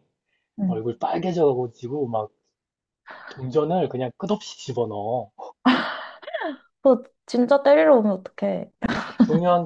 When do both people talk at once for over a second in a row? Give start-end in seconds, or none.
none